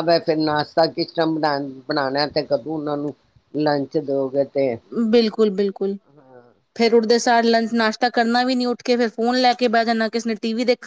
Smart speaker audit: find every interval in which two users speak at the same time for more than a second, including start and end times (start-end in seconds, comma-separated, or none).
none